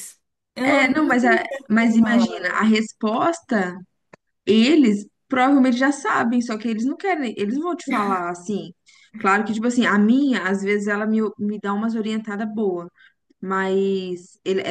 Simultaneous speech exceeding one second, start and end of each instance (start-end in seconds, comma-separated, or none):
0.6-2.6